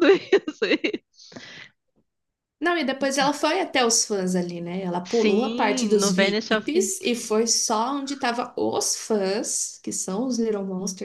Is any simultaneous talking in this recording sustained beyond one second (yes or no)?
yes